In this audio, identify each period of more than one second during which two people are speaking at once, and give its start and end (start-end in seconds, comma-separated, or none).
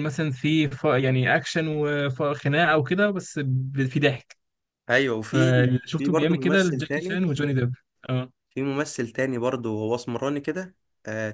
5.2-7.2